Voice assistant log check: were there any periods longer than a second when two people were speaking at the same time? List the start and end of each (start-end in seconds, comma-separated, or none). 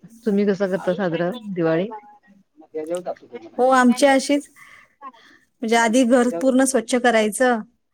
none